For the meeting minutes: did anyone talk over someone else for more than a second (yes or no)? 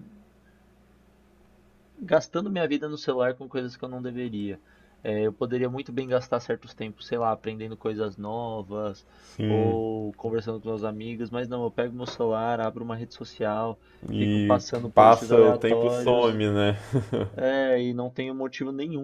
yes